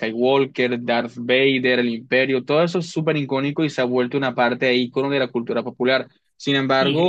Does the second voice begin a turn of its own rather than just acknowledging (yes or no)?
yes